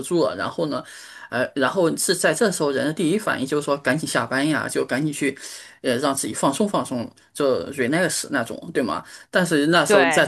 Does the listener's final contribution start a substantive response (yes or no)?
no